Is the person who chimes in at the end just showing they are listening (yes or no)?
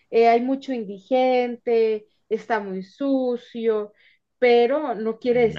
yes